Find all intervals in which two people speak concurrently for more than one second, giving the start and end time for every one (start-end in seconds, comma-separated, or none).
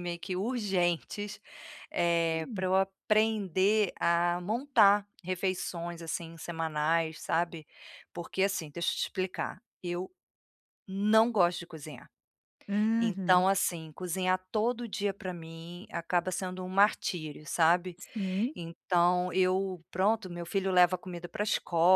none